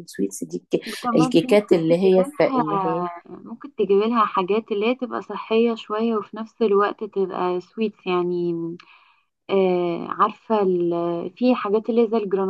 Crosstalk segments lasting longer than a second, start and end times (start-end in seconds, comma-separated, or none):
0.8-3.0